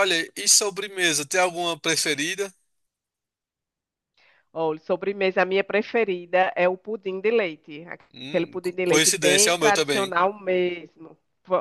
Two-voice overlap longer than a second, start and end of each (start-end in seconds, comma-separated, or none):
8.3-10.1